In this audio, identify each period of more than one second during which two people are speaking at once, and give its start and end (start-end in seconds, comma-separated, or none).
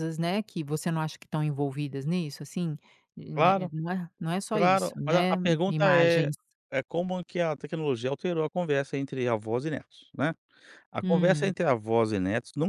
4.5-6.3